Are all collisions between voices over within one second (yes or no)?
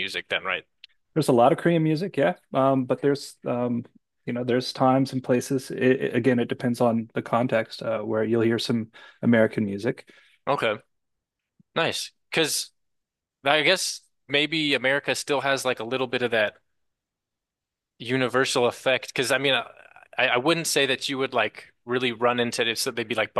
yes